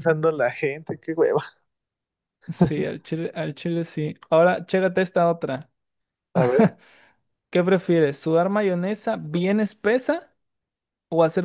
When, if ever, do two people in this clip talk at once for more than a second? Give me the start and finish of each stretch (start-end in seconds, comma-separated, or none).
none